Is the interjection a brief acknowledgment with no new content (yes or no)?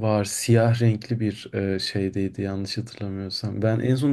yes